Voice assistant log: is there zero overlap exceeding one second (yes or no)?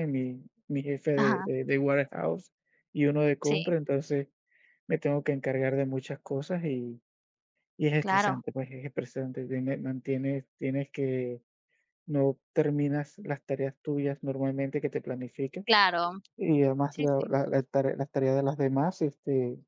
yes